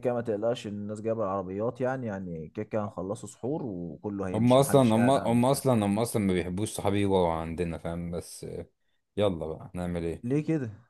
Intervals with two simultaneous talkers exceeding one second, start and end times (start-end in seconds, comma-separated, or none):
4.3-5.6